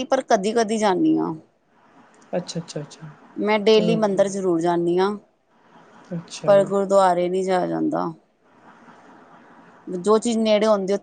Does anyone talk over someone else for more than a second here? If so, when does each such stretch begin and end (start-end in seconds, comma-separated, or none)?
none